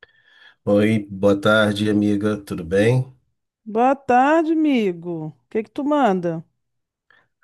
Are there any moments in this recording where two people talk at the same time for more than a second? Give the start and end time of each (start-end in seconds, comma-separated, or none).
none